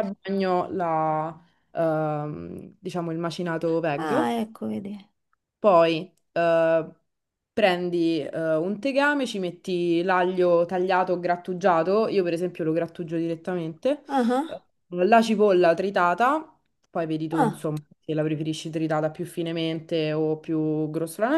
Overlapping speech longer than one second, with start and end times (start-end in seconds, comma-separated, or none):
none